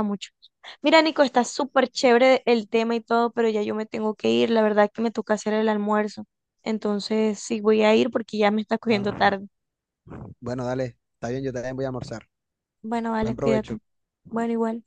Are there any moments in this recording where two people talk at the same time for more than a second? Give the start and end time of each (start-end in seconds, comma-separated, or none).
none